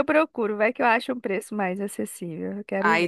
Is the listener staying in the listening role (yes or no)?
no